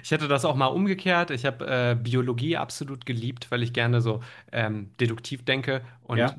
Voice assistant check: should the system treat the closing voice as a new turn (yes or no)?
no